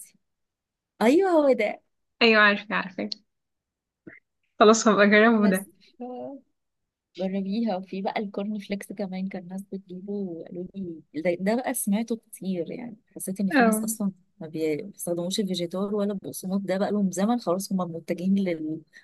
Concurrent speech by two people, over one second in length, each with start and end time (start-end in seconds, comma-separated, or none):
none